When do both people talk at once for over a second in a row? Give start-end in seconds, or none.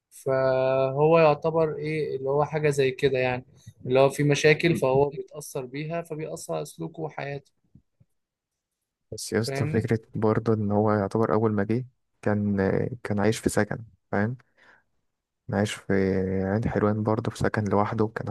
none